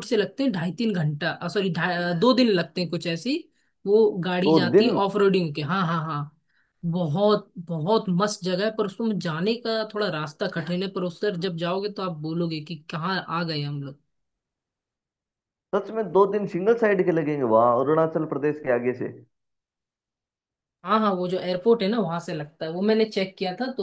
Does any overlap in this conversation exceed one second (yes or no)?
no